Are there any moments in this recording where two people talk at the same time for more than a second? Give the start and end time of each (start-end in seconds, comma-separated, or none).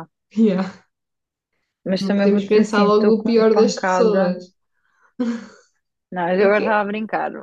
2.0-4.3